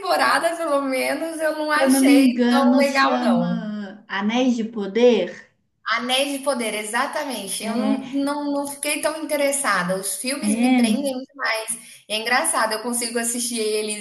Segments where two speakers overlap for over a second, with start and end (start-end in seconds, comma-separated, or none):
1.7-3.6